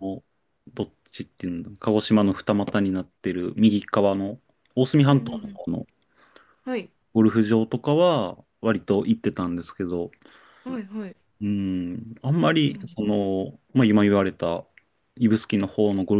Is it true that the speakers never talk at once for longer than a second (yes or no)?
yes